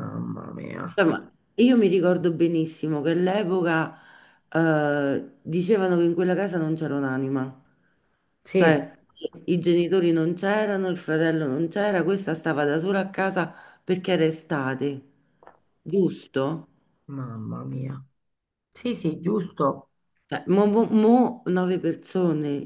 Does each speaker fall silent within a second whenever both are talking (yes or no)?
yes